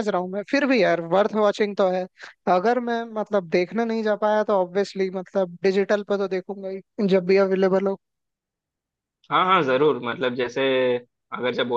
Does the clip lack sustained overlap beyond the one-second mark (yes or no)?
yes